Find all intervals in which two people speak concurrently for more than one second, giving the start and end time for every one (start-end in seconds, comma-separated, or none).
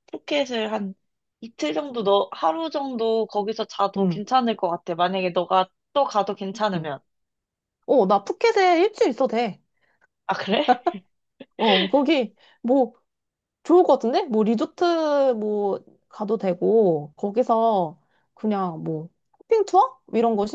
none